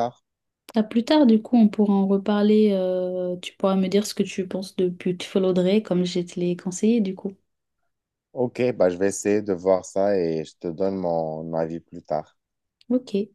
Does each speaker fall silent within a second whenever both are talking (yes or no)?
yes